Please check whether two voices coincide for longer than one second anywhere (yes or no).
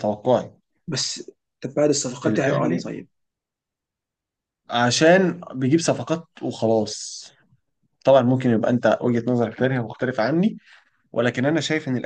no